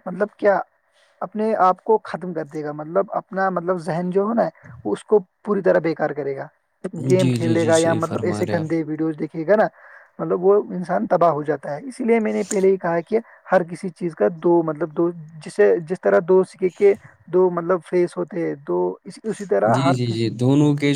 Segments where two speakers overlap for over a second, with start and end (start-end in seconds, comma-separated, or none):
7.2-8.7